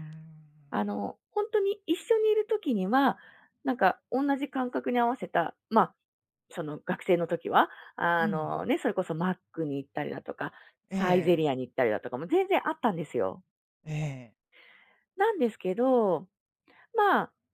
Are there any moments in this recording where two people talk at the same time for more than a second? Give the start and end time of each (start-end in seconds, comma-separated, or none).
none